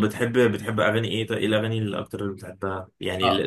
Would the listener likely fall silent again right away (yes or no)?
no